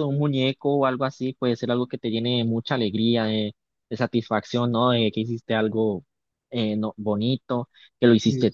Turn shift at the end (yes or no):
no